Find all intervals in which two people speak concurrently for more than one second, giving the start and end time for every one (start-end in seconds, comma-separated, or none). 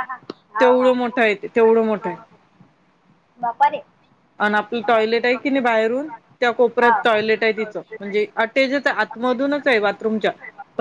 0.6-2.2